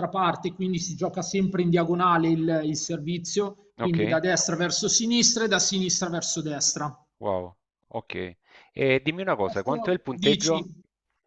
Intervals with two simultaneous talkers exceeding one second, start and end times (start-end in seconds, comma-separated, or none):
9.4-10.7